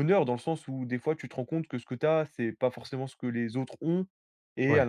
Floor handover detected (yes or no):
no